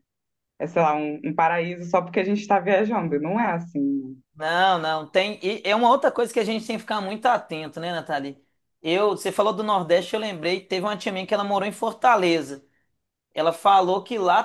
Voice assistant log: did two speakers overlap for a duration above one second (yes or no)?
no